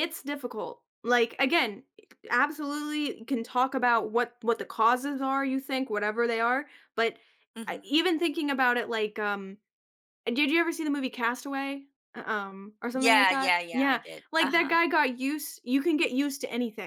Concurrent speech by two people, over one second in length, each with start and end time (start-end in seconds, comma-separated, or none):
12.9-14.7